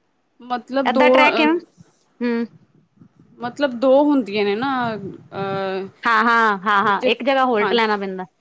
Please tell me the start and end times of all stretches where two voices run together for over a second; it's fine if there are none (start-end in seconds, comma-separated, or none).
none